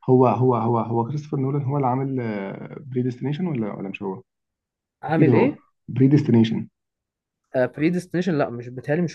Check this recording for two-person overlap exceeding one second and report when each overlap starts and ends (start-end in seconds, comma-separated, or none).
none